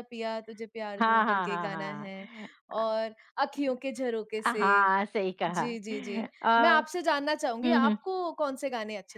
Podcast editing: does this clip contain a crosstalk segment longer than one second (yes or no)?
yes